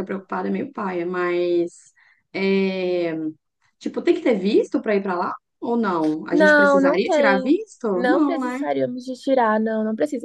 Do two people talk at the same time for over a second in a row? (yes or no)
yes